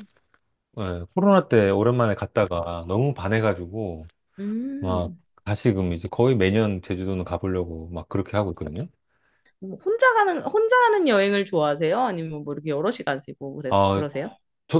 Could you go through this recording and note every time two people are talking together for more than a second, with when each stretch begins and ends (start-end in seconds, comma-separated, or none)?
none